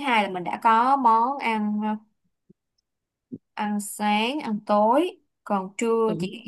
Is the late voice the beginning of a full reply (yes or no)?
no